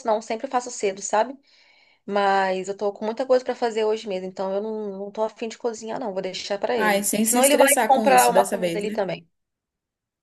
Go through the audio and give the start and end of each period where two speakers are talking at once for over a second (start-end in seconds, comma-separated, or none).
6.8-9.0